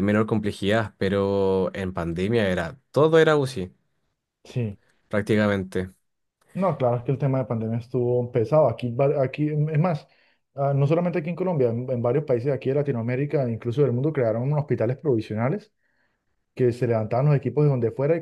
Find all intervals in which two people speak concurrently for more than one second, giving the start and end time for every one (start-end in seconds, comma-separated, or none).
none